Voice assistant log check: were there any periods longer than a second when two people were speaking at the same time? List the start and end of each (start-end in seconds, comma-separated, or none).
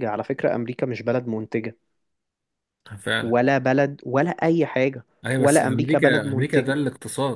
5.4-6.8